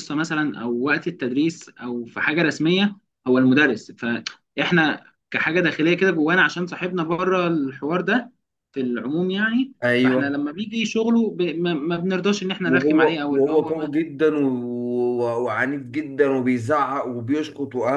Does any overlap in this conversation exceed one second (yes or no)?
yes